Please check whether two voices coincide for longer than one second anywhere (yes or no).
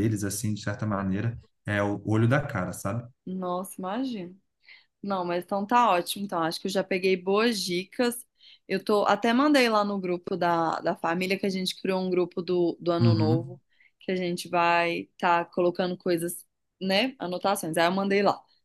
no